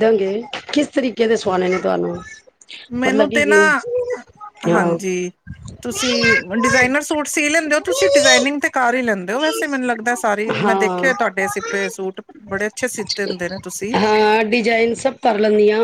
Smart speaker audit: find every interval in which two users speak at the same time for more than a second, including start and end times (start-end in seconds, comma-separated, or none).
none